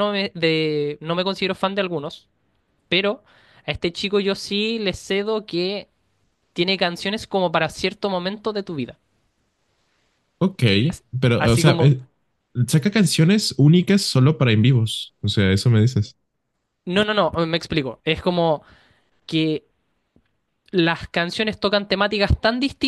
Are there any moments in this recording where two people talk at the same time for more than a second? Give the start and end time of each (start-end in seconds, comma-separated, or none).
none